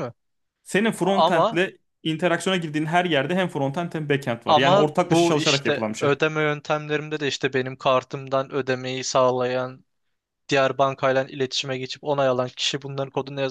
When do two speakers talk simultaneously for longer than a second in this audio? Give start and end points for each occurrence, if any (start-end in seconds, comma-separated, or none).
4.5-6.1